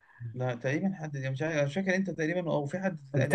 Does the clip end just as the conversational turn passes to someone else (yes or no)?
yes